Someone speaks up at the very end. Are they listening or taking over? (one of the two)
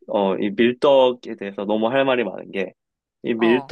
listening